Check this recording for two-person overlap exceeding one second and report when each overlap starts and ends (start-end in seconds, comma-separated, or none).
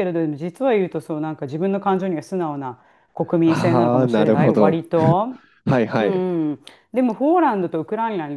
3.4-4.8